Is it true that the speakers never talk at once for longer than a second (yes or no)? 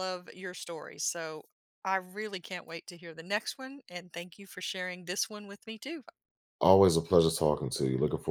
yes